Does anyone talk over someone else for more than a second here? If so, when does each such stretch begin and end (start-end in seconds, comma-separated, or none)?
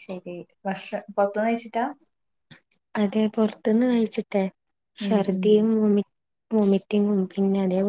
none